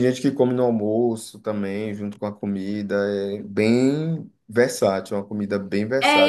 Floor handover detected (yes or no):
yes